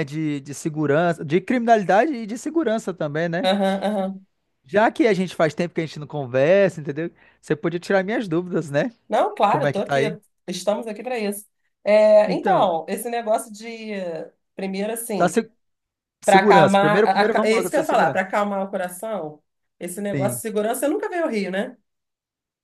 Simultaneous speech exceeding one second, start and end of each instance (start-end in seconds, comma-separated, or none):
16.2-18.2